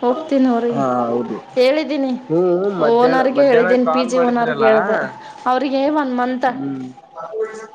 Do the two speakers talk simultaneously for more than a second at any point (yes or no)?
yes